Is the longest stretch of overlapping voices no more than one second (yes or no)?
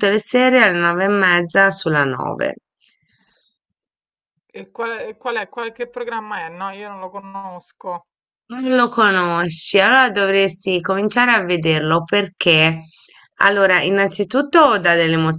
yes